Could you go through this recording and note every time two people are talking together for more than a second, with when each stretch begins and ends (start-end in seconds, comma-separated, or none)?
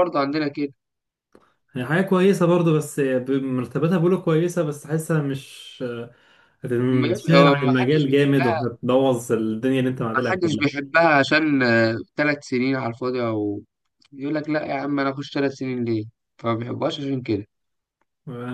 6.9-8.6